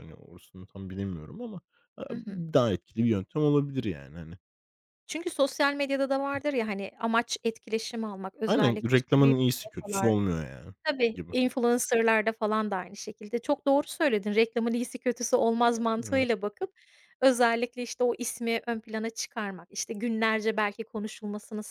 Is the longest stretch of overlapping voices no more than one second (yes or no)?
no